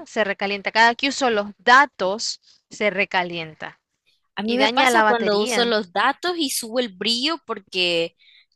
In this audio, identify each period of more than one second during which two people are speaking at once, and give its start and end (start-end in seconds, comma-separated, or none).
4.4-5.8